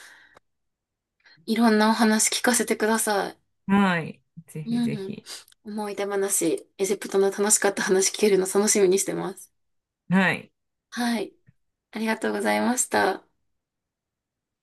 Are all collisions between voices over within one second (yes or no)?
yes